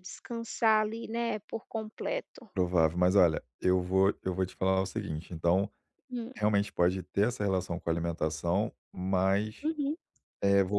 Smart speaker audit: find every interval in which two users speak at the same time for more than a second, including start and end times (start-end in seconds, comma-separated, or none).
none